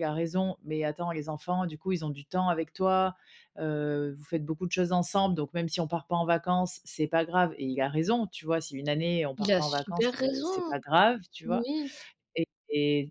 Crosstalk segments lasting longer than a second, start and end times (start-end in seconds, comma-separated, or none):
9.4-10.7